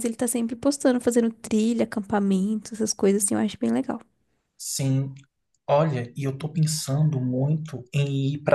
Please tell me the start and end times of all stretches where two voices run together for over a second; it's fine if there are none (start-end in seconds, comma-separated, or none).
none